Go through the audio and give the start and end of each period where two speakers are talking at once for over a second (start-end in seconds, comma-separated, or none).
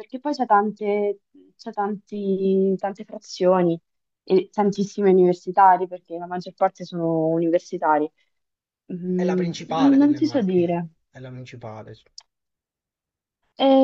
9.1-10.9